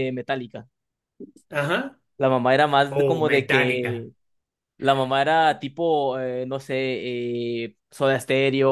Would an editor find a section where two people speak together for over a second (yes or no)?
yes